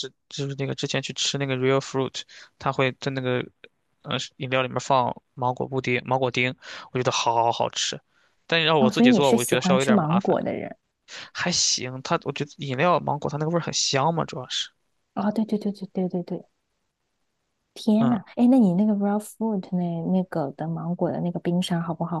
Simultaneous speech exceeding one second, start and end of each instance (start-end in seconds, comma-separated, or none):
8.8-10.3